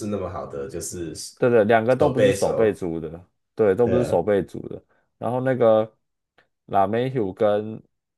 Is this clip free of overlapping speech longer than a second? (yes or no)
no